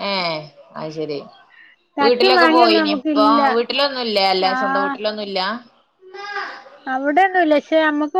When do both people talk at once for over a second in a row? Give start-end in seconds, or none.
2.0-3.4